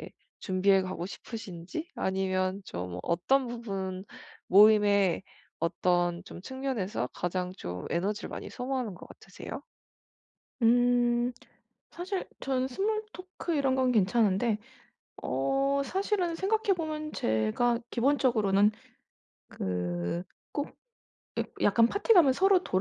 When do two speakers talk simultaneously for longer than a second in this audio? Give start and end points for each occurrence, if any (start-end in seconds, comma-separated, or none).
none